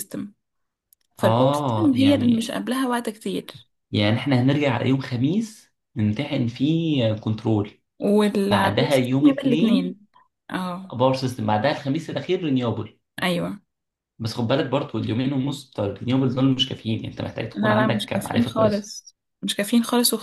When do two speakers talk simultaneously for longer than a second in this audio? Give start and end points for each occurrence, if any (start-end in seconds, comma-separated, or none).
1.2-2.5, 8.5-10.0, 17.5-18.9